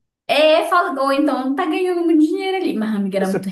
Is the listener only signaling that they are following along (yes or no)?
yes